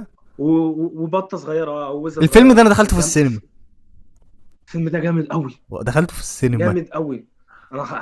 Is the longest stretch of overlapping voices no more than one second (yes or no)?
no